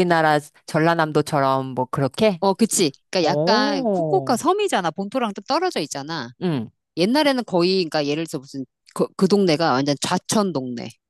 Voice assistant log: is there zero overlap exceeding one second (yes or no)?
no